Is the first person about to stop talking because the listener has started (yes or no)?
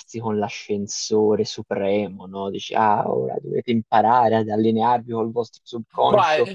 yes